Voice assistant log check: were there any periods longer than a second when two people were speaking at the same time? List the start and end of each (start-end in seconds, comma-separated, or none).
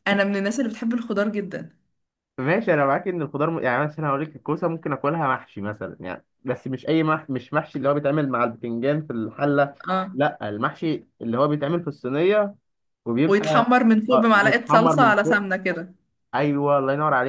14.1-15.5